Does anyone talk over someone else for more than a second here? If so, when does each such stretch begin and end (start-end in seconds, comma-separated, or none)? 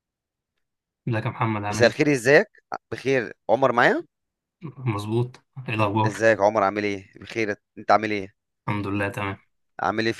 none